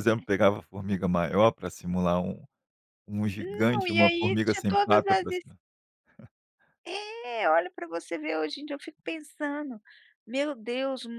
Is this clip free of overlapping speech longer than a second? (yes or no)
no